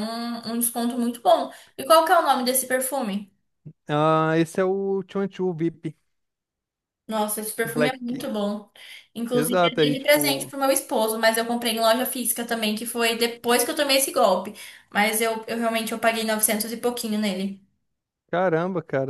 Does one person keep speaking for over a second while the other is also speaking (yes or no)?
yes